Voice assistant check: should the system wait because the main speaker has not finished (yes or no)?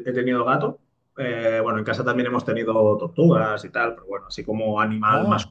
yes